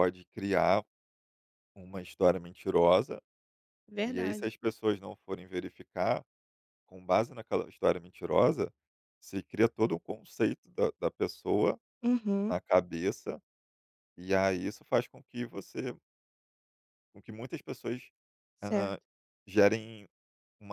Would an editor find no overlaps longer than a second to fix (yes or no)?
yes